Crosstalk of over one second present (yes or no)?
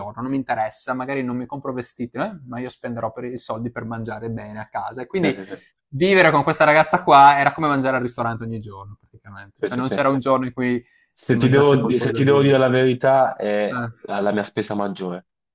yes